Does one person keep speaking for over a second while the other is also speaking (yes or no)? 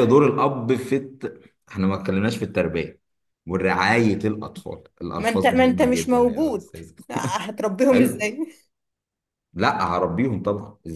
yes